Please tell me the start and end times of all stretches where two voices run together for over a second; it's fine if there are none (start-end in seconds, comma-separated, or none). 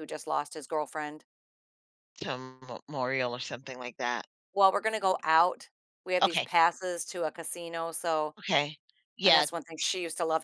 none